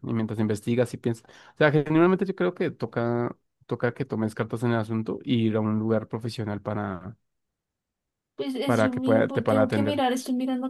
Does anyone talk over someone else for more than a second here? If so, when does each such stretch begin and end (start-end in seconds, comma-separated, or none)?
8.6-10.0